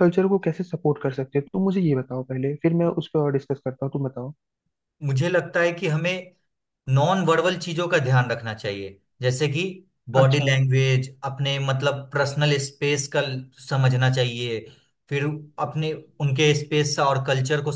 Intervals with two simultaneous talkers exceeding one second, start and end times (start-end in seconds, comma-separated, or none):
none